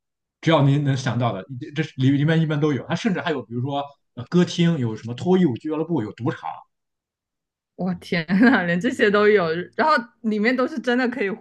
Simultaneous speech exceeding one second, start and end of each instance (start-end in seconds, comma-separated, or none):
none